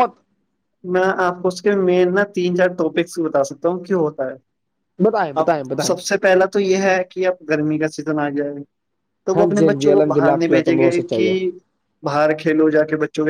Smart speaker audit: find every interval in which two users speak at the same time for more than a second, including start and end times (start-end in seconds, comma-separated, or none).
9.4-11.3